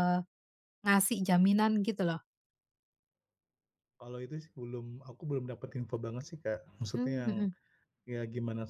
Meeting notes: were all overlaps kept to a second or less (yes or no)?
yes